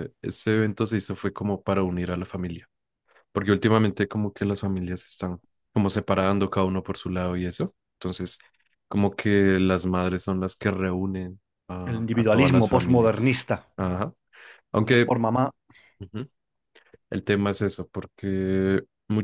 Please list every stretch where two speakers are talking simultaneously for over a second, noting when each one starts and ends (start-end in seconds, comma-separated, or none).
11.9-13.4